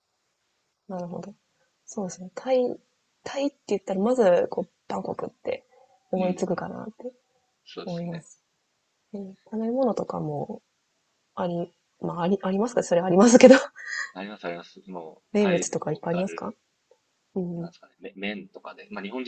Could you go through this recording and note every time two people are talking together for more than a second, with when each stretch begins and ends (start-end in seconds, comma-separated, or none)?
15.3-16.5